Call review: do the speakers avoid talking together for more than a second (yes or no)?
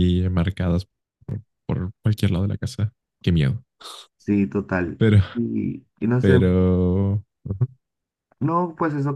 yes